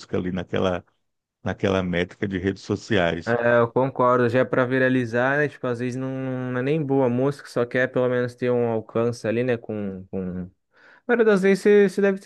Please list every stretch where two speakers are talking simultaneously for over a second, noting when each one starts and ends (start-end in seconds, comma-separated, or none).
none